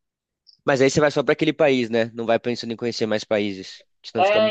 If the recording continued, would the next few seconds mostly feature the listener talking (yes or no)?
yes